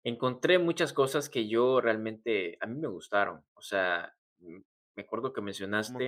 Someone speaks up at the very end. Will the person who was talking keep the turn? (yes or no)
no